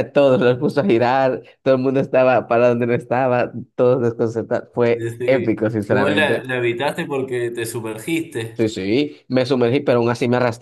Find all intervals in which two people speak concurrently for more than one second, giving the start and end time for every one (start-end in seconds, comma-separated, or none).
4.9-6.4